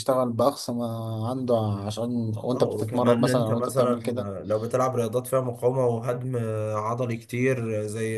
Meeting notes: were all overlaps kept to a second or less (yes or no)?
no